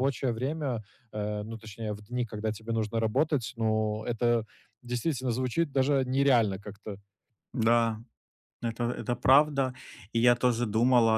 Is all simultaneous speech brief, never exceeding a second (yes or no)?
yes